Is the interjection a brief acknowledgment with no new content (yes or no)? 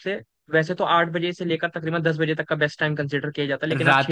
yes